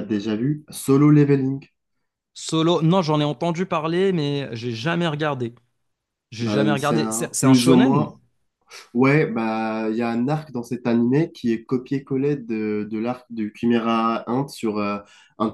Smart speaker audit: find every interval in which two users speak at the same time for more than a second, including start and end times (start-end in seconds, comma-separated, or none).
6.4-8.1